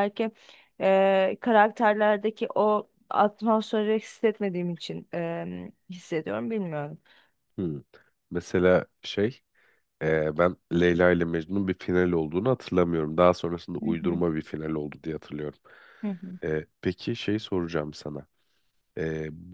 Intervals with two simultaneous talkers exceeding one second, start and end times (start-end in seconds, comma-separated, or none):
none